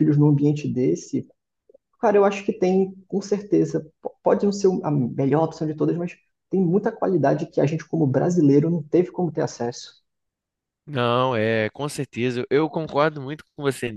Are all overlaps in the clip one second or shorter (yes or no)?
yes